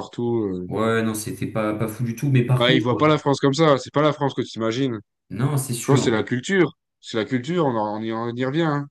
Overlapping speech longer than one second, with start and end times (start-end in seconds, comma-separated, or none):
none